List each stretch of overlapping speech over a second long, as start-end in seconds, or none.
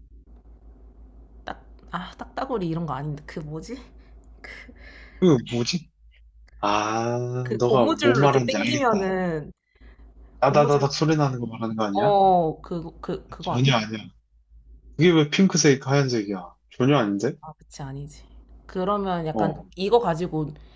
7.4-9.1